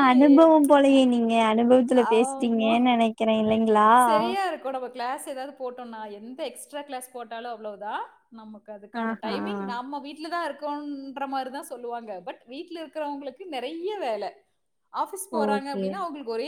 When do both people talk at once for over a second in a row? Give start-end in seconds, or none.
none